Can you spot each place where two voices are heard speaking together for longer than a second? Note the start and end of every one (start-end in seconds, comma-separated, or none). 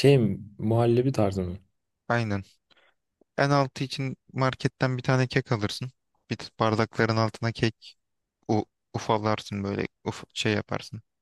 none